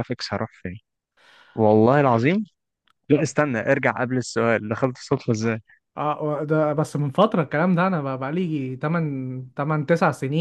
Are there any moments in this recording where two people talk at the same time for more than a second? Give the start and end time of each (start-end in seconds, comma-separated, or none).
none